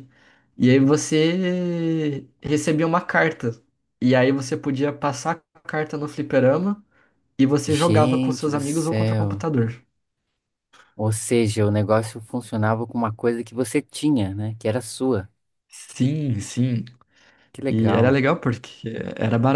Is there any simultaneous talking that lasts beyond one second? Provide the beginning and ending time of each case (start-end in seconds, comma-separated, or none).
7.7-9.4